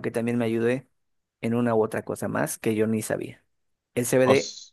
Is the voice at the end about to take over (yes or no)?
no